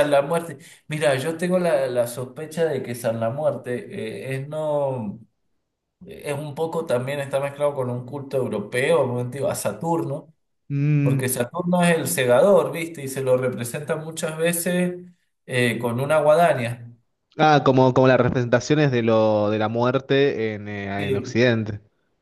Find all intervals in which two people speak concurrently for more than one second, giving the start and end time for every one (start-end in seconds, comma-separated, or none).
none